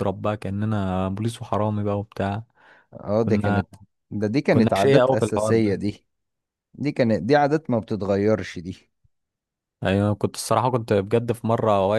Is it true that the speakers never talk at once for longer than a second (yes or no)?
no